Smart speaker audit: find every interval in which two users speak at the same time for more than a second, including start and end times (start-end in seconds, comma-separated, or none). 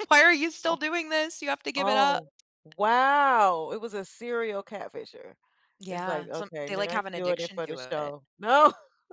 5.9-8.1